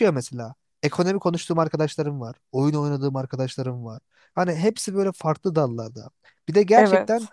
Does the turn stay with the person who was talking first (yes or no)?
yes